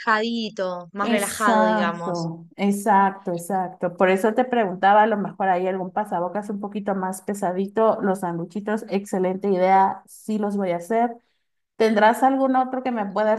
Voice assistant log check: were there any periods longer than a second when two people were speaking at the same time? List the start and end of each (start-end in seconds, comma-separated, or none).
1.0-2.3